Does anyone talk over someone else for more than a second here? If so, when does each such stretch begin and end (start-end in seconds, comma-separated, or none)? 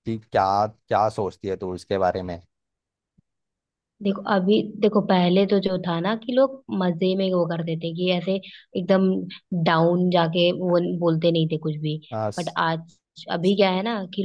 none